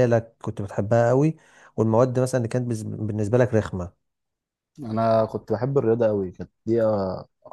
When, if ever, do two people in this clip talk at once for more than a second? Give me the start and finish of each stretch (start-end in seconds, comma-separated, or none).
none